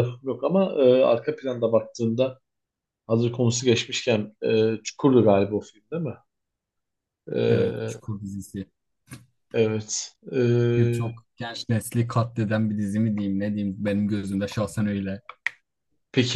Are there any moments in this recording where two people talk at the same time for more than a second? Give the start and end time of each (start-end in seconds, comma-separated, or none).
none